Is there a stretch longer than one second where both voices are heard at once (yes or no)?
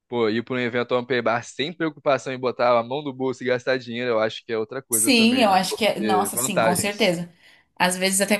yes